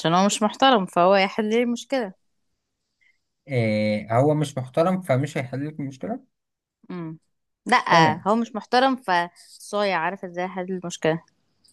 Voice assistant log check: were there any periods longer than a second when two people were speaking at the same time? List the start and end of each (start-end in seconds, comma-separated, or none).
none